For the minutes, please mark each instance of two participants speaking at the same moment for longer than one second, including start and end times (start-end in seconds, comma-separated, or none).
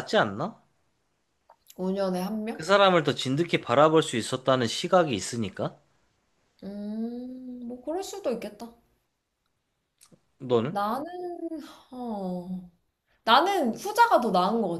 none